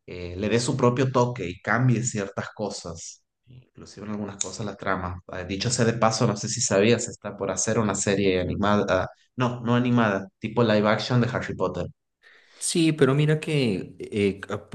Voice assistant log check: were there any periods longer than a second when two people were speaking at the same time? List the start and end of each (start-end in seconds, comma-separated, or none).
none